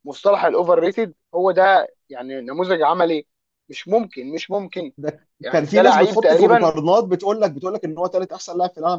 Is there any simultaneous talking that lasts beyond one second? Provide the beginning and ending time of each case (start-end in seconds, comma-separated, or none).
5.4-6.7